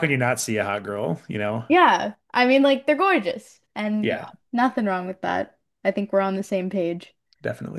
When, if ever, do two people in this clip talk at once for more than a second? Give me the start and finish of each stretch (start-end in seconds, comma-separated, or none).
none